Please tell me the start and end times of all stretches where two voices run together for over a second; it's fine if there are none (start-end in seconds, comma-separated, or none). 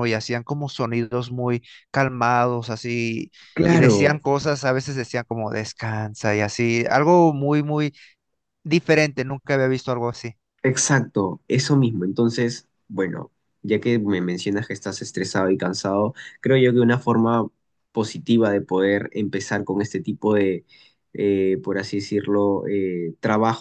none